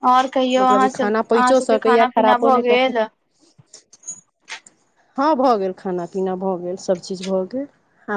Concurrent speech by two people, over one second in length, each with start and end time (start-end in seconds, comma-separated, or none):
0.6-2.9